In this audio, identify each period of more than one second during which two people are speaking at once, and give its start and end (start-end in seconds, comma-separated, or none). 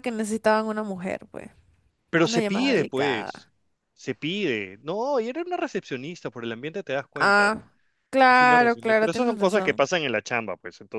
2.2-3.5, 8.3-9.8